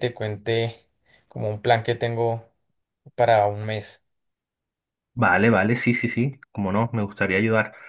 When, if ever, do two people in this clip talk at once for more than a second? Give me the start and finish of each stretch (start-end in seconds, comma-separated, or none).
none